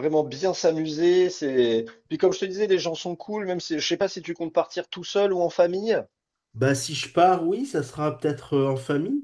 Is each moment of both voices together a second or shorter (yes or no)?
yes